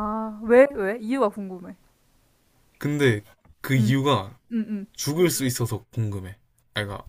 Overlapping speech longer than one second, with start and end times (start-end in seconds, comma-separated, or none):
none